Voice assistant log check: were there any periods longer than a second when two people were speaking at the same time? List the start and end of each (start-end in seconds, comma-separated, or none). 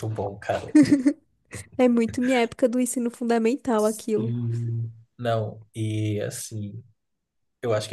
none